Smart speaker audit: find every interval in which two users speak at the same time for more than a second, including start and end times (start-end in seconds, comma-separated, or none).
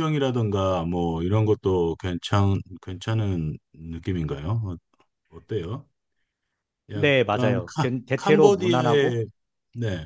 6.9-9.2